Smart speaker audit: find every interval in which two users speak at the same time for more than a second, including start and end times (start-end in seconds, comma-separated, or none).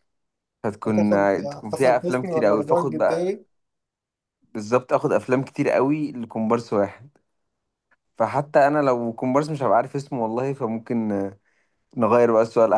1.7-3.4